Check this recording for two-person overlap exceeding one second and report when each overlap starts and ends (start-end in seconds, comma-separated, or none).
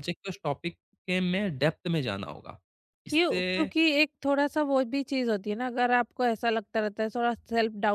none